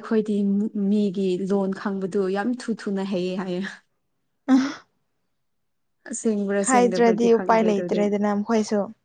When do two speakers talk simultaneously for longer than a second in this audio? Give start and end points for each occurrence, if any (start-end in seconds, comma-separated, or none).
6.6-8.0